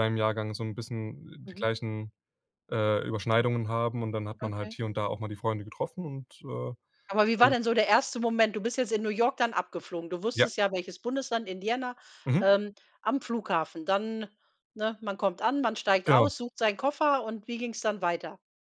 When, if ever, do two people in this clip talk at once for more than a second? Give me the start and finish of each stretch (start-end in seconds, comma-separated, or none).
none